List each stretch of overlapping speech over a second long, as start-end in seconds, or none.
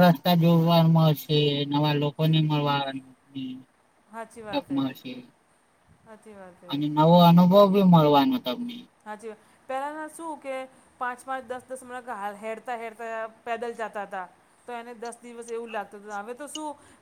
none